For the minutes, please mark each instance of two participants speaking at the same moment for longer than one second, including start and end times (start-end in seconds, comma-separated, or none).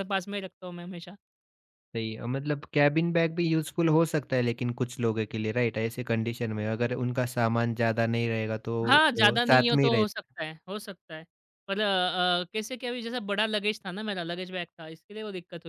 8.9-10.3